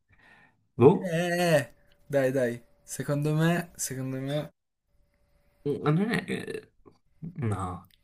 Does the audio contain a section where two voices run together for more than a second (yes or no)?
no